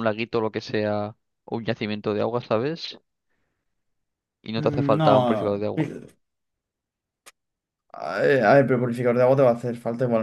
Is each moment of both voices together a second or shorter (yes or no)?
no